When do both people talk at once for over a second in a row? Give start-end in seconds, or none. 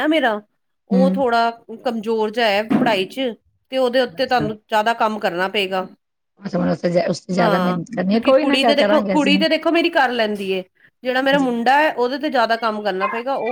7.4-9.3